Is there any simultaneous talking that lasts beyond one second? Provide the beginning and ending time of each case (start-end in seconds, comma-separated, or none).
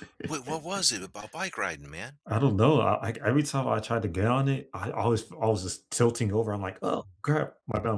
none